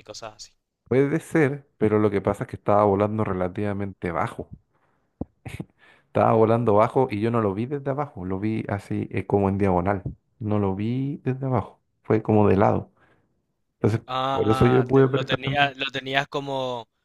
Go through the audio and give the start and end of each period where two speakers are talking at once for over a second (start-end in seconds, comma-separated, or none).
14.1-15.7